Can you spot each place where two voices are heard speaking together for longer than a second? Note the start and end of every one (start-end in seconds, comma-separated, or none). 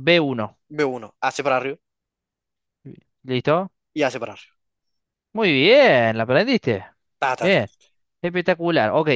none